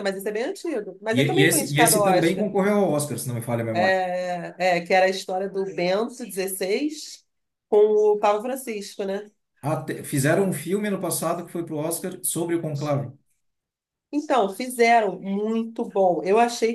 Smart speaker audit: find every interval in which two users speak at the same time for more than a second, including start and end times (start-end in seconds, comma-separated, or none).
1.1-2.5